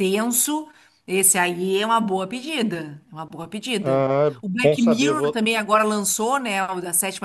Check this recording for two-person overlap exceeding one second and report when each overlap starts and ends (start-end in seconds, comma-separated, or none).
3.8-5.4